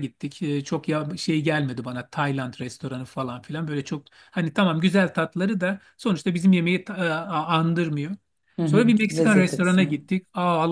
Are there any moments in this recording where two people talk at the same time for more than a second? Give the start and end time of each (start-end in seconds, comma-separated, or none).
8.7-10.1